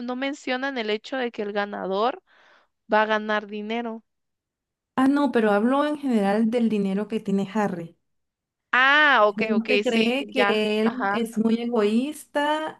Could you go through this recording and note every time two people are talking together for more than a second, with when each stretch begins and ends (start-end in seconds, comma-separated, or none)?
9.2-11.3